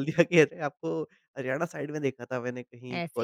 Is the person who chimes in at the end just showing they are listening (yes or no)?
yes